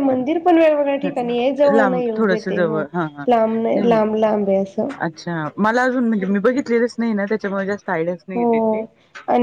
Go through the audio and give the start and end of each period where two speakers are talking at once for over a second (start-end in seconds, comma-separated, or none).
1.0-2.8